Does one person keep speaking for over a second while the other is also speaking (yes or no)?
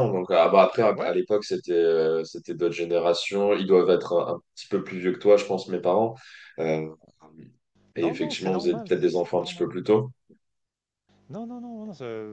yes